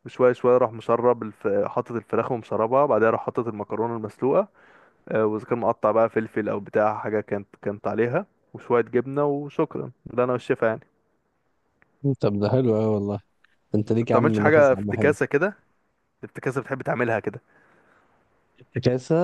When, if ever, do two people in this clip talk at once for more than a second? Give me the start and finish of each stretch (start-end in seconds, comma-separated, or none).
13.8-15.1